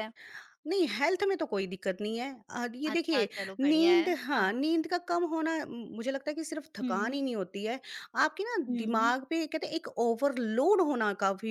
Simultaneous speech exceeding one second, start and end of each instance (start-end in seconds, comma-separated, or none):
2.9-4.7